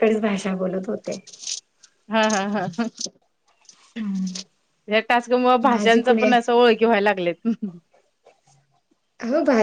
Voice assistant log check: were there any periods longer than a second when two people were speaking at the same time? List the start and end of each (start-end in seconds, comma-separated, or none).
none